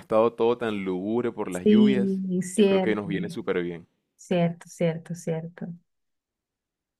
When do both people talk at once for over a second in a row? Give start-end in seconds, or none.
1.5-3.0